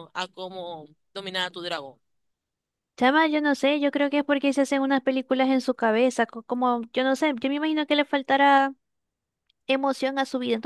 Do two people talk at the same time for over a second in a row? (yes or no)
no